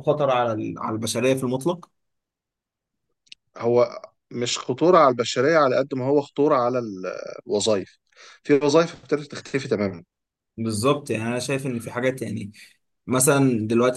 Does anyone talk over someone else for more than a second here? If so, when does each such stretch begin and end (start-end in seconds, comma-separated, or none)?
none